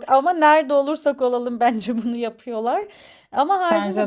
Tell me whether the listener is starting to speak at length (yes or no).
no